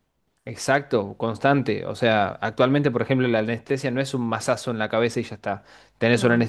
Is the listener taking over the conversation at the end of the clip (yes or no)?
no